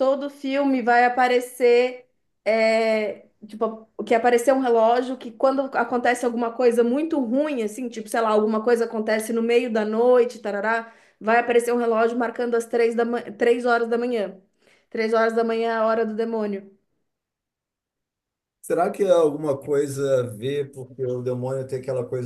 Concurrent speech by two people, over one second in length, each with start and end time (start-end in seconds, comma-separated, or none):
none